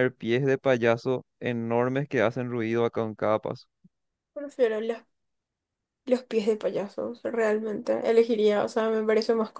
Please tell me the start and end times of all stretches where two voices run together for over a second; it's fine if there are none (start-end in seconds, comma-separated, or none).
none